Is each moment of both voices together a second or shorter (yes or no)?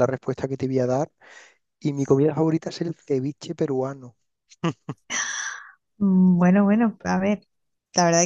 yes